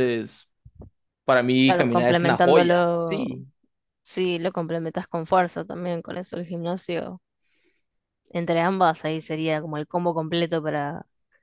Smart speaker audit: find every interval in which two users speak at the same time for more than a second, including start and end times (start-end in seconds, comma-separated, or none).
1.6-3.3